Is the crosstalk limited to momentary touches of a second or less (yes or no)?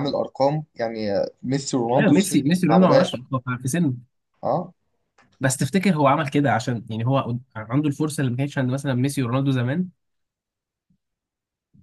no